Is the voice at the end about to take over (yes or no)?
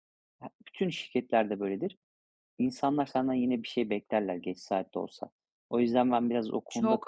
no